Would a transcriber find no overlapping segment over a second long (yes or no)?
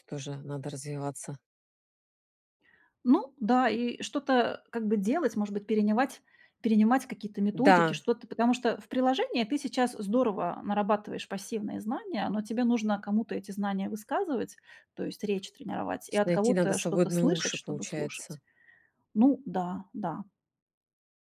no